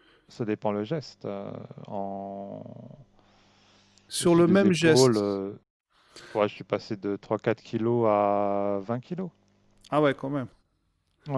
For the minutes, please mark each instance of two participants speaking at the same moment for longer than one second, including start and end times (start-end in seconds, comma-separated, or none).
4.2-5.4